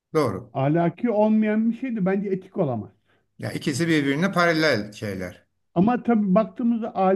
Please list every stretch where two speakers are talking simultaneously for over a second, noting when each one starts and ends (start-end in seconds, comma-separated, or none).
none